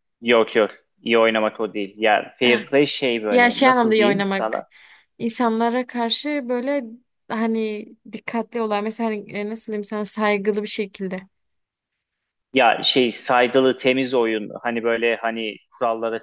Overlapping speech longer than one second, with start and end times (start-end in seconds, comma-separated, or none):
3.3-4.6